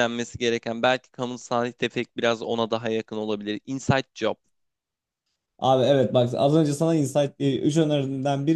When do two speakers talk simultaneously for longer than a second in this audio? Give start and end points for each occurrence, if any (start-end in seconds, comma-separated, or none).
none